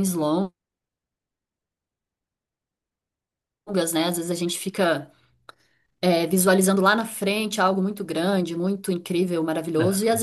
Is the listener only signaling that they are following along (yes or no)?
yes